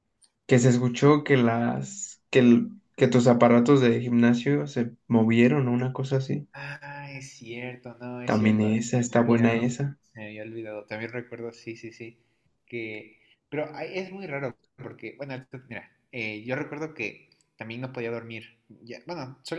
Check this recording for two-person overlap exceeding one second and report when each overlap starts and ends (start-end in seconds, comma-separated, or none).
8.2-9.7